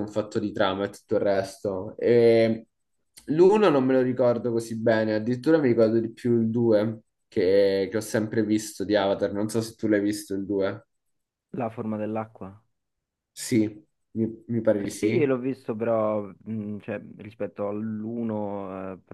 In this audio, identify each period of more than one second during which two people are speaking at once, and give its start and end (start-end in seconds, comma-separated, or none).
none